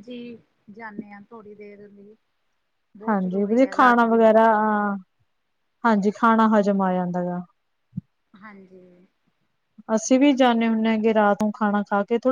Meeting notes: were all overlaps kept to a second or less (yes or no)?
no